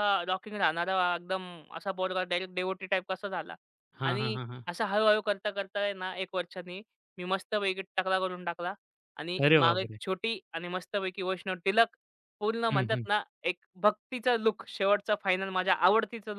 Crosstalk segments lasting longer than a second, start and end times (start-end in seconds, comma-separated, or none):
none